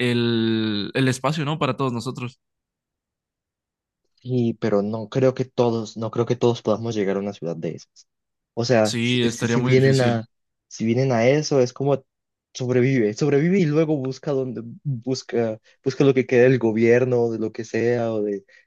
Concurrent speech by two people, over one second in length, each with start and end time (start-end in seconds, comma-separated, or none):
8.8-10.2